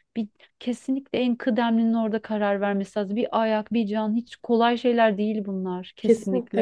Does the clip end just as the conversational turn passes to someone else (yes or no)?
yes